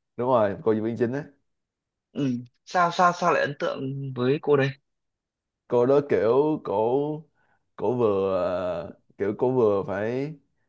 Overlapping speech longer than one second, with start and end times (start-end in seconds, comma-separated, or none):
none